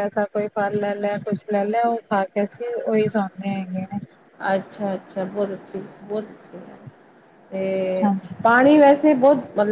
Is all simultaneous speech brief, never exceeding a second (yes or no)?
yes